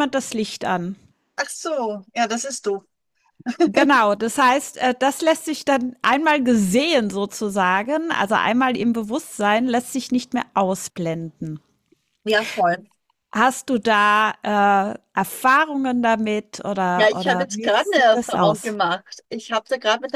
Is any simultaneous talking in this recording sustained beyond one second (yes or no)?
yes